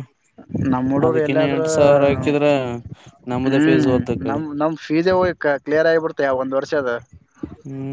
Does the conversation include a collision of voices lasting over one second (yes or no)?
yes